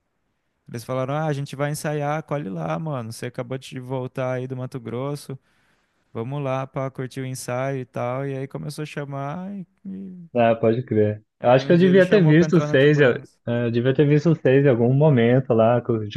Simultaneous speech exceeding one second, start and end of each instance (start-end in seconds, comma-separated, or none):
11.4-13.4